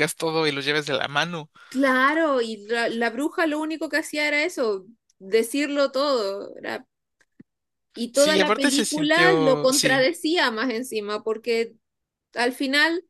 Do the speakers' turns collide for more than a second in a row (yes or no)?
yes